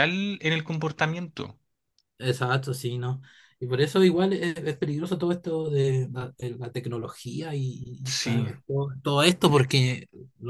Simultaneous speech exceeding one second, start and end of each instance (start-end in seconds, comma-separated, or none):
none